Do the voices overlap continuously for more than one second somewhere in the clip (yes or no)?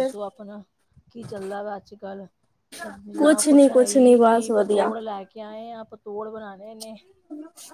yes